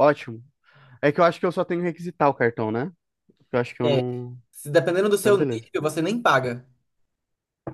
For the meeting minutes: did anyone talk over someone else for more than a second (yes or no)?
no